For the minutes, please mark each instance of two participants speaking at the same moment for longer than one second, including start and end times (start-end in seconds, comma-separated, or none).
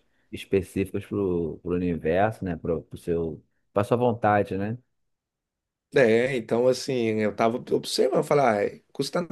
none